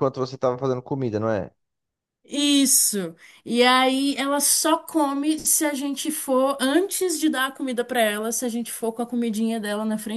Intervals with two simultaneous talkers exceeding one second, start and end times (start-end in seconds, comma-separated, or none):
none